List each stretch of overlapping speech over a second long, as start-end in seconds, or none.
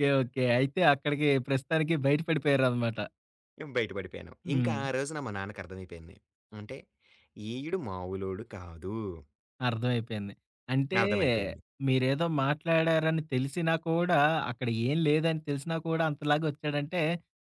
none